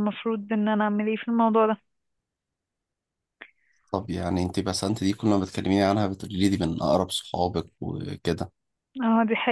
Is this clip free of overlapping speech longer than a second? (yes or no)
yes